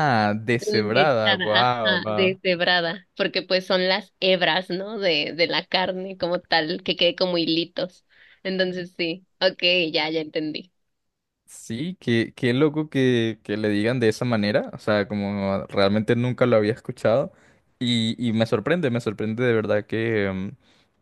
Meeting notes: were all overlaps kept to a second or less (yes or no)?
no